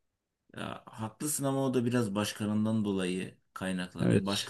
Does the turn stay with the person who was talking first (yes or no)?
yes